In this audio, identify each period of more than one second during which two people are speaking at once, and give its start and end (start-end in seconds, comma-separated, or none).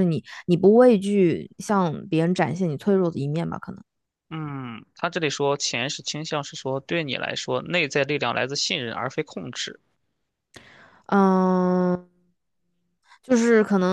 none